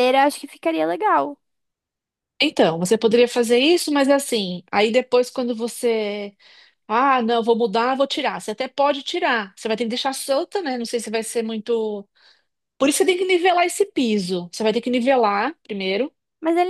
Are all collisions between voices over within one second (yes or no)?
yes